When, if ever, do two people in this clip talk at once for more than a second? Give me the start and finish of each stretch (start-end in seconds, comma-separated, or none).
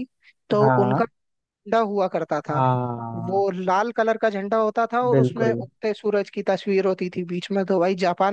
none